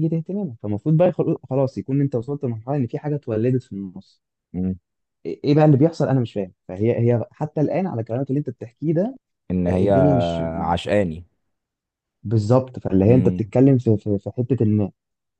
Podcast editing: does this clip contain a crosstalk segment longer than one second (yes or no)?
no